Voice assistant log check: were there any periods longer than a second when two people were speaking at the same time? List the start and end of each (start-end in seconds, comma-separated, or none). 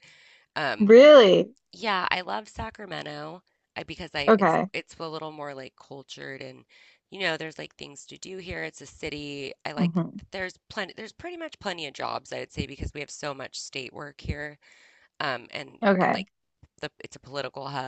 none